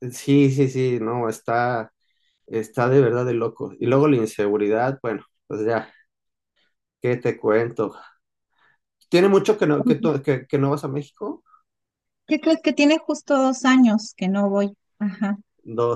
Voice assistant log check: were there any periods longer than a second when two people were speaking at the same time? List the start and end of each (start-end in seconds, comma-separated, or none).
none